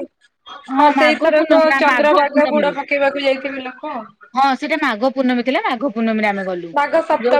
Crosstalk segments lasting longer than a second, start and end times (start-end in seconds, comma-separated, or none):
1.0-2.7